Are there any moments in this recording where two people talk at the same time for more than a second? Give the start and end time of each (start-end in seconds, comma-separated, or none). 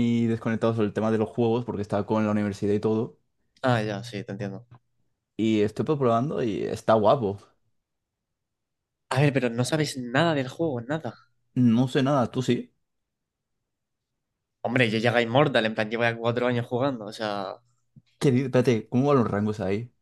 none